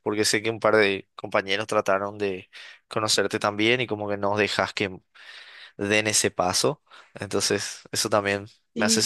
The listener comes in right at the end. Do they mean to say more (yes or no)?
yes